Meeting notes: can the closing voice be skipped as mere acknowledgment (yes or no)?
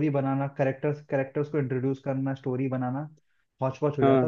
yes